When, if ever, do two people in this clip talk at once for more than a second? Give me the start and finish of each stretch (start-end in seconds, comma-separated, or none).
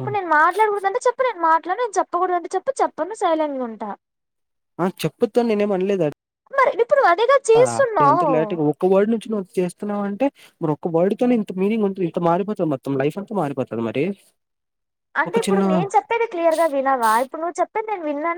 none